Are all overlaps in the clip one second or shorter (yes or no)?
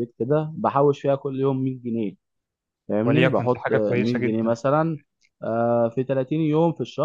no